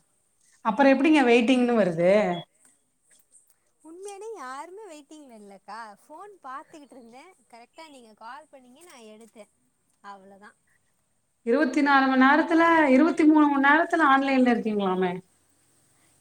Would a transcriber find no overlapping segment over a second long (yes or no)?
yes